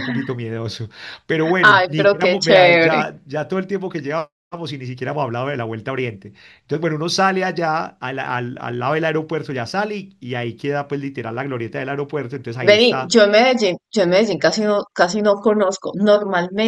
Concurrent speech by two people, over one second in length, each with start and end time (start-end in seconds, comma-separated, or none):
1.6-3.0